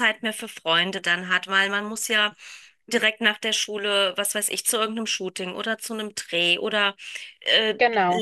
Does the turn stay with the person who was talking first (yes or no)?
yes